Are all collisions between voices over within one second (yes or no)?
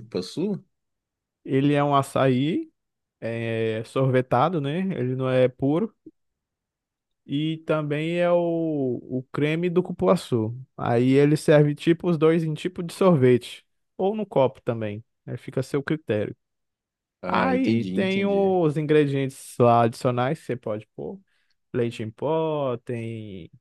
no